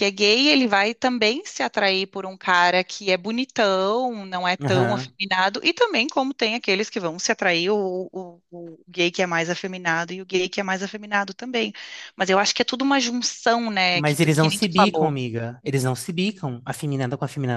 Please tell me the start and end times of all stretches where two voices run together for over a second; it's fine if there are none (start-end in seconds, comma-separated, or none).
13.9-15.1